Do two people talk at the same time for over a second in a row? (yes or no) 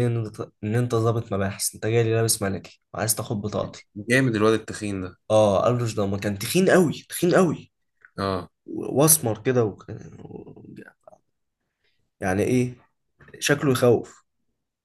no